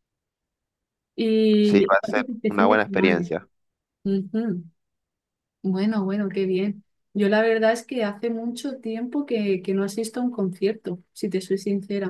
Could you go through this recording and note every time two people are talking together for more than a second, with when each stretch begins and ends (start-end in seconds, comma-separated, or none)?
1.6-3.2